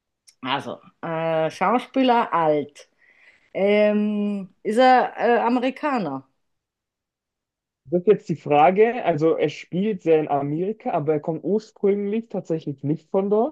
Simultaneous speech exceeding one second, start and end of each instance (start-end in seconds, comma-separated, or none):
none